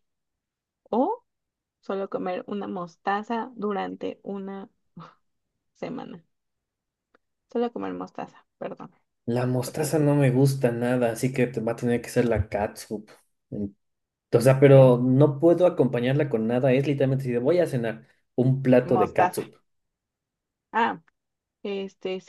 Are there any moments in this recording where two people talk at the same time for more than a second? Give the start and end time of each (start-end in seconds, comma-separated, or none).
none